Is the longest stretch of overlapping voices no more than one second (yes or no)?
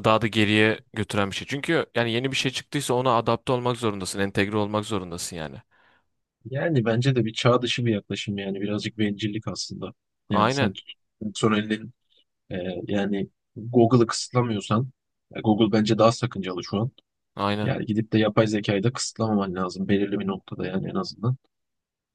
yes